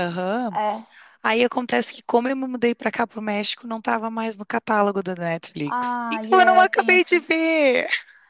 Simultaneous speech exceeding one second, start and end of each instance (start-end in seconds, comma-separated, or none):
5.7-7.4